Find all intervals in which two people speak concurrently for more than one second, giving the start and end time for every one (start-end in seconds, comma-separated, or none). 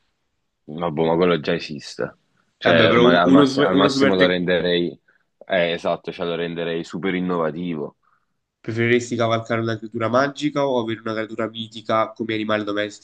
2.6-4.4